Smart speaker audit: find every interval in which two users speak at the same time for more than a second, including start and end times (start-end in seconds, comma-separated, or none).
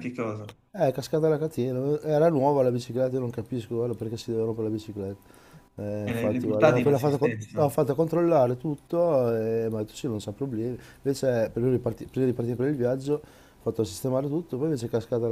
6.1-7.7